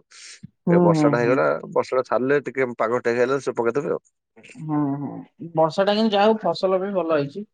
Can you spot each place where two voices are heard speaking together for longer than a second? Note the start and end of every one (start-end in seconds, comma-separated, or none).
none